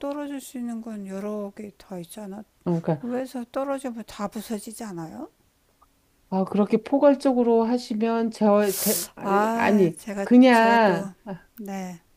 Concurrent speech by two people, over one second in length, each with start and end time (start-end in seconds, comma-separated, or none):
9.2-11.1